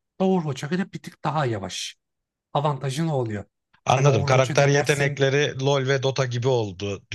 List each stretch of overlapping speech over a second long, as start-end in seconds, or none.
3.9-5.3